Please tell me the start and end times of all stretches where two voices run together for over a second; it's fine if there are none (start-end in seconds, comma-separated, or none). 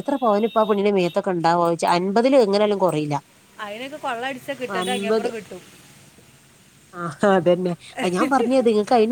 none